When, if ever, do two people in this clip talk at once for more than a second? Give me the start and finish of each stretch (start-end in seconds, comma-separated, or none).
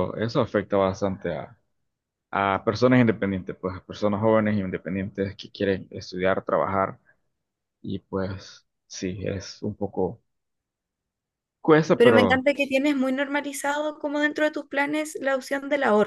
none